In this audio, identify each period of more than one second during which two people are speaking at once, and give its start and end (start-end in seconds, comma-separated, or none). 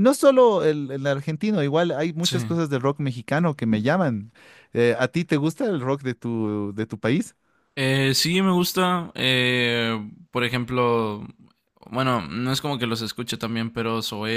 none